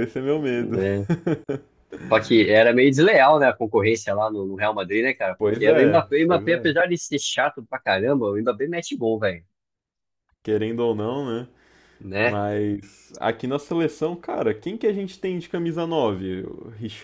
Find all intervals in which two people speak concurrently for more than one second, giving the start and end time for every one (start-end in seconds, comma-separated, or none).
5.4-6.7